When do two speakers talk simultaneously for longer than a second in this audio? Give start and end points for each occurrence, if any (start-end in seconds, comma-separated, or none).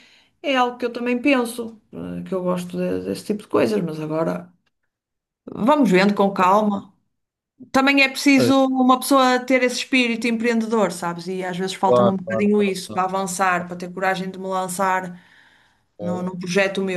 11.8-13.2